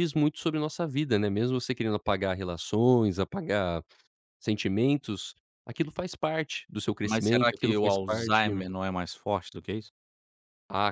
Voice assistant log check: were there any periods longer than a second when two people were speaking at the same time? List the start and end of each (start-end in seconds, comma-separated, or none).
7.0-8.5